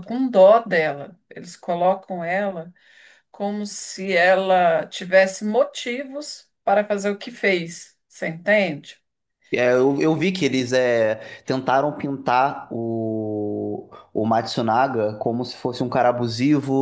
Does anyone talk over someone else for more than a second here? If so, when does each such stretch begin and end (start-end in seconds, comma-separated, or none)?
none